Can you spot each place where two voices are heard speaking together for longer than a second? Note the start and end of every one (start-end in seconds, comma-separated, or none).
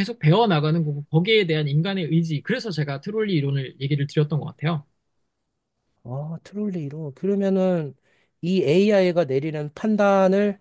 none